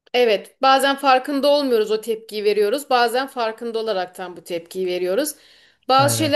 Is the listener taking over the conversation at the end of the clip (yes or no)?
no